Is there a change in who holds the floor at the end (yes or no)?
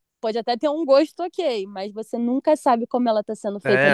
yes